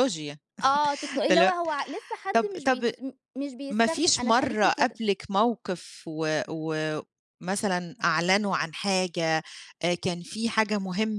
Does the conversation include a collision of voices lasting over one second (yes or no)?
yes